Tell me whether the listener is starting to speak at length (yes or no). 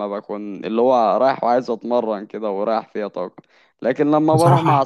no